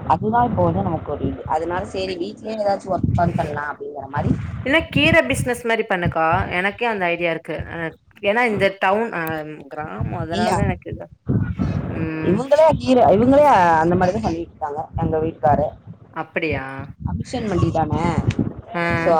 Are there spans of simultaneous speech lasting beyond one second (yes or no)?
no